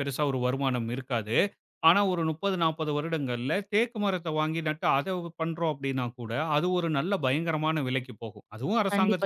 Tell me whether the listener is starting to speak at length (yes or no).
yes